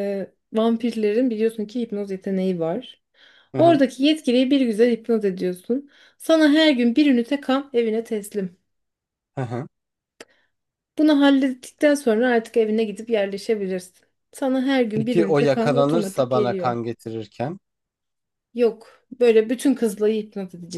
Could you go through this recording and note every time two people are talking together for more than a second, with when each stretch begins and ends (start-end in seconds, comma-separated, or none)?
14.9-16.7